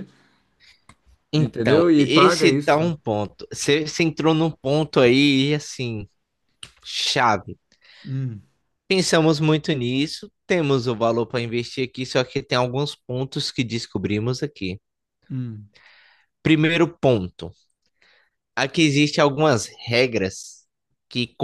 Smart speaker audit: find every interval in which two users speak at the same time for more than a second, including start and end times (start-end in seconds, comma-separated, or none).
1.3-2.9